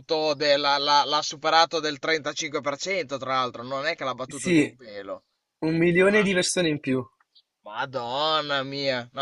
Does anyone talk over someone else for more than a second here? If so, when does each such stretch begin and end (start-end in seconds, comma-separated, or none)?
none